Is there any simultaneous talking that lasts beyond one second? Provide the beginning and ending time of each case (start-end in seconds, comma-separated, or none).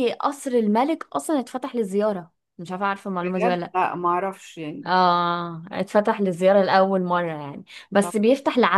none